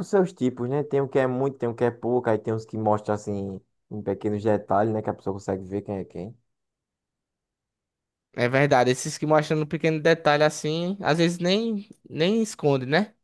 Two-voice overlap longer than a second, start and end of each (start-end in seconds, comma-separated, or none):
none